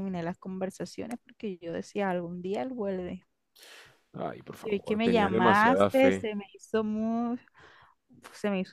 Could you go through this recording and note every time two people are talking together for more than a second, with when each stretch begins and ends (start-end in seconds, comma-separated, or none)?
4.6-6.3